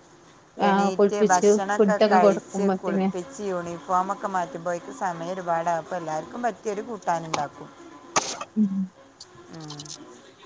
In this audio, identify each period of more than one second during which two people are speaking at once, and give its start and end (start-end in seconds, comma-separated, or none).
0.7-3.1